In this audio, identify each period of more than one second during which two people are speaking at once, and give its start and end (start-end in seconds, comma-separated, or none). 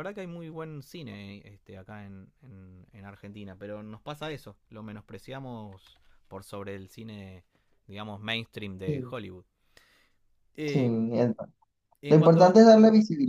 none